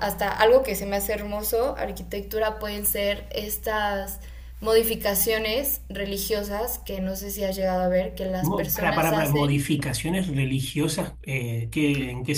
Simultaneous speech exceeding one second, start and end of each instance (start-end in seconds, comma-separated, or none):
8.5-9.7